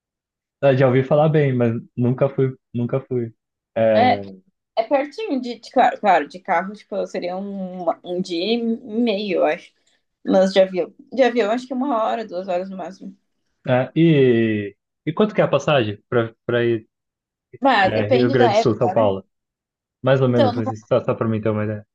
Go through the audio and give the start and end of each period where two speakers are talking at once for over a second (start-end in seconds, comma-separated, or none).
17.8-19.1